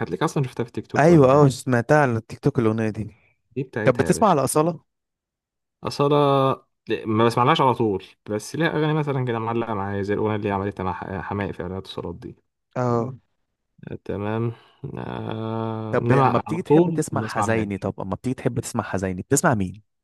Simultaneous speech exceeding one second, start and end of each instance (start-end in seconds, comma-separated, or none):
15.9-17.9